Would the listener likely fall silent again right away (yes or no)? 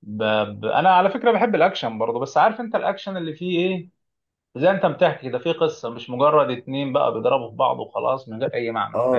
no